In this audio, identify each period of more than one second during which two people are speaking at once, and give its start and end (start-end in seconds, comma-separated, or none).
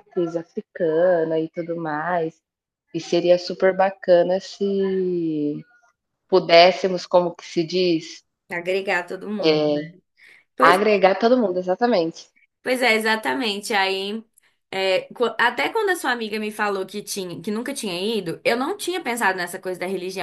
none